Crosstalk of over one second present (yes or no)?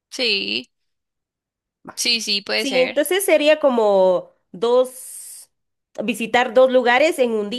no